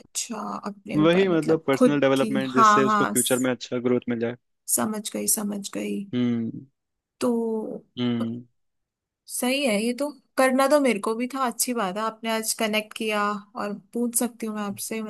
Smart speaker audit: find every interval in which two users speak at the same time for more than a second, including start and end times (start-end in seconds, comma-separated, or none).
0.9-3.5